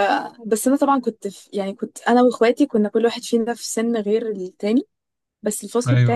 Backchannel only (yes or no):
yes